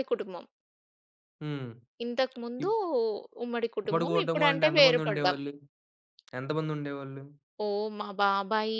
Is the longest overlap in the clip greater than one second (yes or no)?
yes